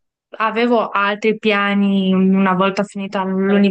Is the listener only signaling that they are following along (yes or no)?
yes